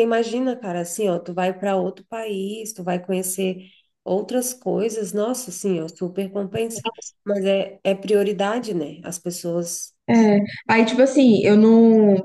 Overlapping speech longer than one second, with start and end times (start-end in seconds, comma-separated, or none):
none